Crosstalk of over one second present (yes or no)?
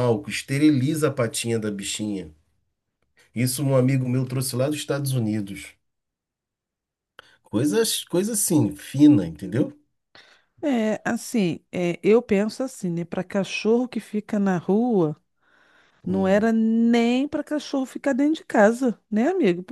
no